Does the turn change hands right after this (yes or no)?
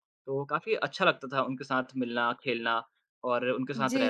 yes